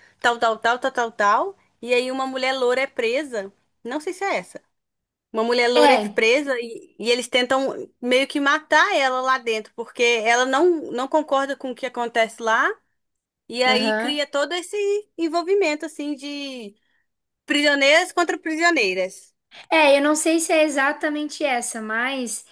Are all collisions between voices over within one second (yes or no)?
yes